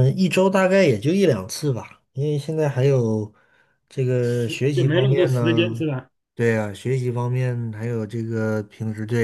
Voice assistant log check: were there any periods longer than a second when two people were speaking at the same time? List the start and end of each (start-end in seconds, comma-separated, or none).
4.2-5.8